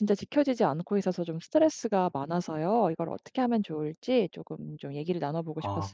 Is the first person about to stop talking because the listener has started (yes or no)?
yes